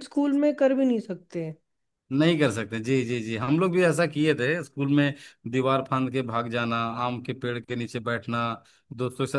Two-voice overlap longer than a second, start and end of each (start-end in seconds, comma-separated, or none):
none